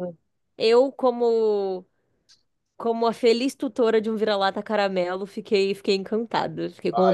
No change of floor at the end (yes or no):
no